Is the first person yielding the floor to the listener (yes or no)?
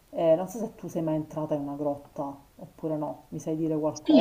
yes